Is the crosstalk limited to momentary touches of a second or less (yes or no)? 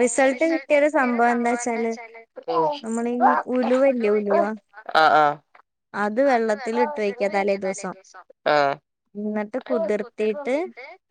yes